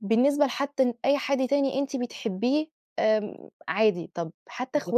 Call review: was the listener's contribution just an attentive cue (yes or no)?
yes